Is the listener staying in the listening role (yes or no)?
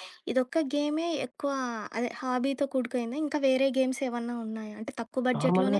yes